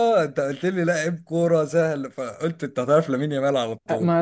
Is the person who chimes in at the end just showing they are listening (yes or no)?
no